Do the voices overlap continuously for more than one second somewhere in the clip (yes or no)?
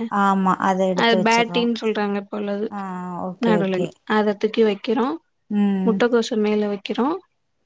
no